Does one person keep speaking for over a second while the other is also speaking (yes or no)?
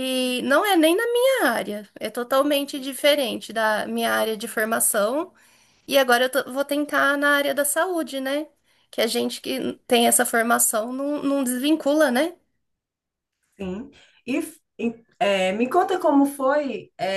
no